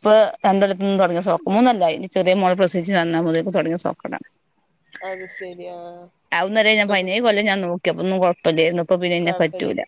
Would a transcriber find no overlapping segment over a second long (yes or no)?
yes